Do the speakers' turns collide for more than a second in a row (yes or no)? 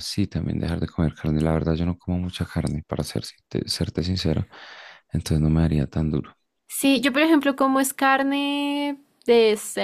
no